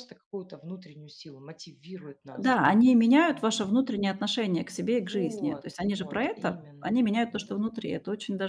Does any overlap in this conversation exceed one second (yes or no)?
yes